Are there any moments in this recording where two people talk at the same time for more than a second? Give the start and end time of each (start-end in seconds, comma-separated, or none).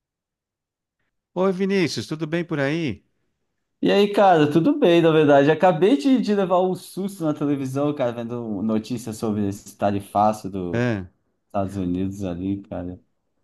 none